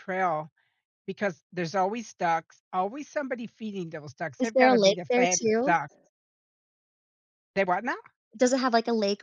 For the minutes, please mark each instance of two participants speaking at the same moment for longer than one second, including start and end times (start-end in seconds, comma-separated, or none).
4.4-5.8